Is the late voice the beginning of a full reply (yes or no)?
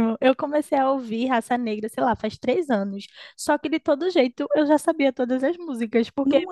no